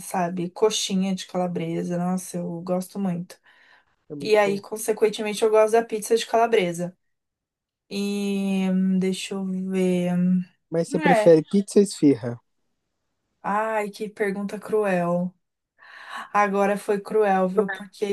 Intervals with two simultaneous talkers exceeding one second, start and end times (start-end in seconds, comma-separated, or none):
none